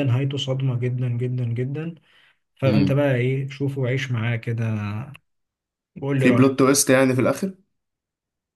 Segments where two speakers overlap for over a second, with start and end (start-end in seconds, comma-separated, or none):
none